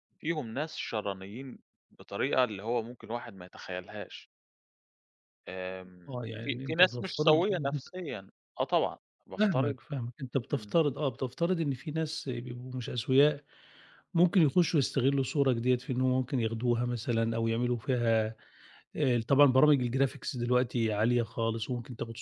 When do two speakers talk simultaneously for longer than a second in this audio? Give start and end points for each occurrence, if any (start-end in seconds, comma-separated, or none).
6.1-7.4